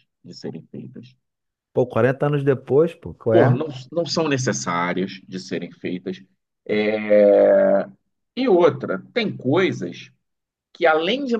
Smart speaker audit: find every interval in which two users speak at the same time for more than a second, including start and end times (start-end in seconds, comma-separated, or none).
none